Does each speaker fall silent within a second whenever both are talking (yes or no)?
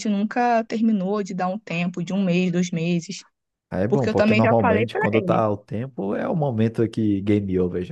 no